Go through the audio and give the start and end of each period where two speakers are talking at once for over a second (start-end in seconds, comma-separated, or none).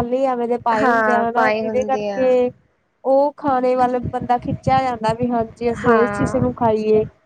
0.8-2.3